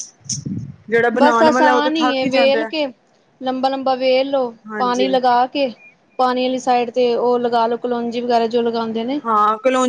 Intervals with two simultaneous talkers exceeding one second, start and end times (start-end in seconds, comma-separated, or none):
1.2-2.7